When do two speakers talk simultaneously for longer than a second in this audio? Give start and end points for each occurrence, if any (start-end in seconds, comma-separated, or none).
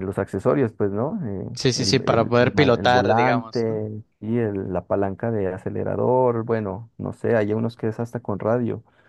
1.5-3.8